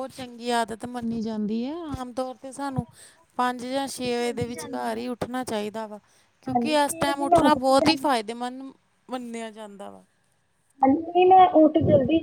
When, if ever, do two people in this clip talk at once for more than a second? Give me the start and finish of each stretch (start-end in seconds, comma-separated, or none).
6.5-8.1